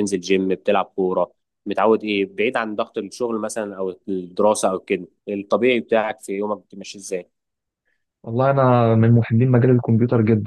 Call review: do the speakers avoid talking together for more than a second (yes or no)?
yes